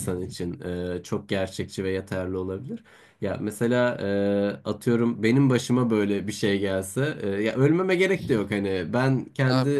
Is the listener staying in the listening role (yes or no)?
yes